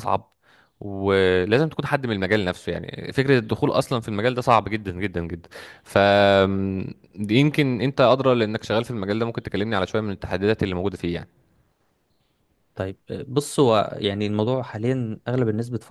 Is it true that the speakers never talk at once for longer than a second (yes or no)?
yes